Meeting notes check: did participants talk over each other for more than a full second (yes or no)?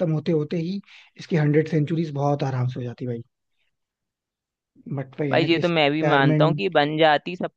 yes